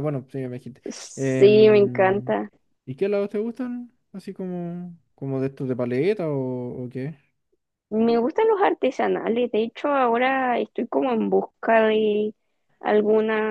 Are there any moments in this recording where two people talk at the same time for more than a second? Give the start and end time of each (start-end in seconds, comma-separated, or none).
0.9-2.4